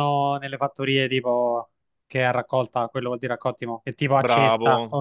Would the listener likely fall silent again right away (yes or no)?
no